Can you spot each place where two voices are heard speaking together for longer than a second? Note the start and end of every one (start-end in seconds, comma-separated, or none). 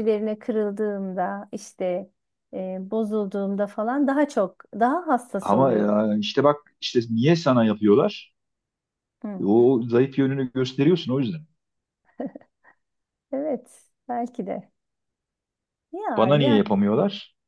none